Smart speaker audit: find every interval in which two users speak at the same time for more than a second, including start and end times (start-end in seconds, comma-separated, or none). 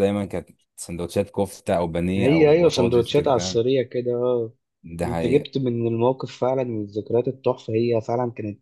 2.1-3.6